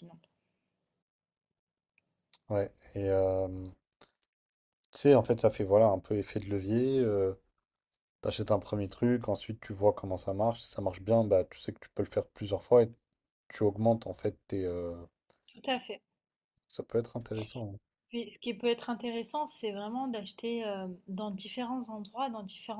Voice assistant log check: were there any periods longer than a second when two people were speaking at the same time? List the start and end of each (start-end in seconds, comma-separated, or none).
none